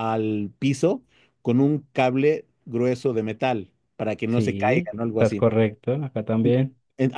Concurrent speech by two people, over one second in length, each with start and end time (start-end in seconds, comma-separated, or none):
4.2-5.5